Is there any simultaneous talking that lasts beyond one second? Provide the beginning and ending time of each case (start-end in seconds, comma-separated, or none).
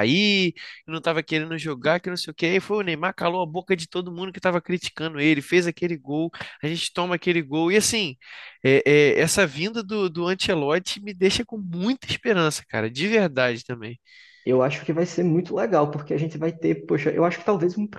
none